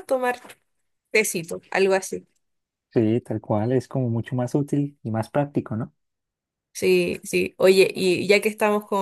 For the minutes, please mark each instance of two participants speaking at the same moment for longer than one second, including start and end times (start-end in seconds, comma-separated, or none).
none